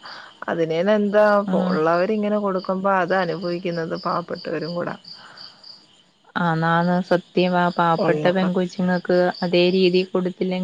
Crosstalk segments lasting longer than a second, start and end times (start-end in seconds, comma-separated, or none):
none